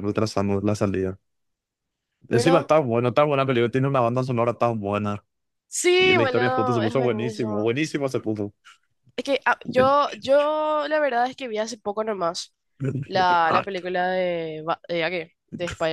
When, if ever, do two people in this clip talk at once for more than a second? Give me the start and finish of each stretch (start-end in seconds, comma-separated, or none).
6.0-7.7